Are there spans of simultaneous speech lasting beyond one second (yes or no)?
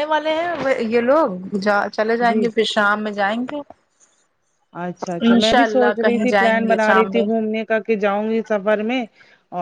yes